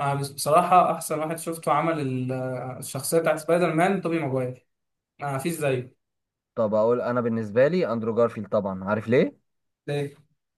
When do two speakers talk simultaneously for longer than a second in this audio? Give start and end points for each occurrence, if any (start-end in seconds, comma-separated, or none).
none